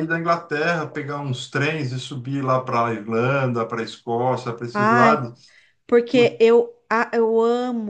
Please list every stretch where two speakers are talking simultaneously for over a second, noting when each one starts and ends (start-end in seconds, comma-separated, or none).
none